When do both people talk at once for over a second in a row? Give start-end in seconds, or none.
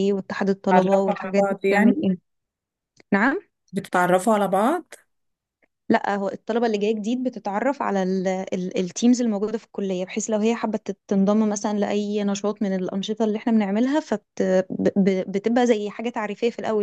0.7-2.1